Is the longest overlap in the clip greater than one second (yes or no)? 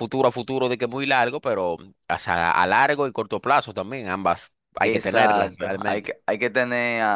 yes